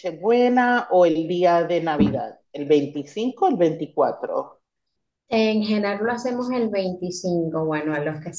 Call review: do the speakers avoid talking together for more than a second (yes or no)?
yes